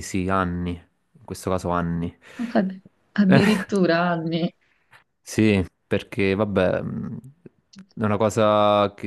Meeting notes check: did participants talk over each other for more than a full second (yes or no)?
no